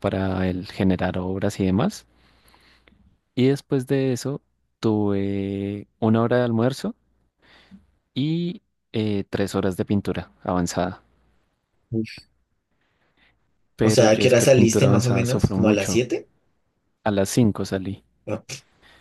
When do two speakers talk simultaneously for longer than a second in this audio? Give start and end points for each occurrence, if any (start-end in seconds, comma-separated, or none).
13.8-16.0